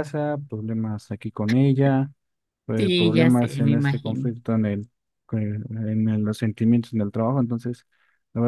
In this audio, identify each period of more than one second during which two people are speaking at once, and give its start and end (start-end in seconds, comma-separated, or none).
2.8-4.3